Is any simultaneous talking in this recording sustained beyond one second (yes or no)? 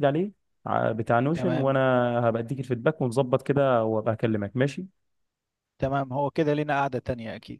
no